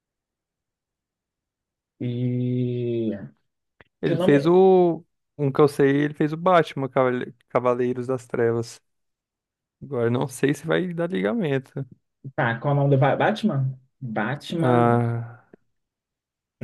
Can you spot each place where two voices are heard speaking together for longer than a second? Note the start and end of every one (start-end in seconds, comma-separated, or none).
none